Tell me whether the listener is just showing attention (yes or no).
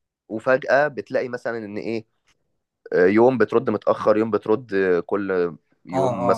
no